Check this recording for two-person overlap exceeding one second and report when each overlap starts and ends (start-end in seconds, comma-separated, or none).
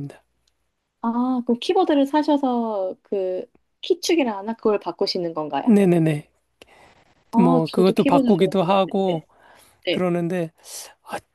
7.4-9.2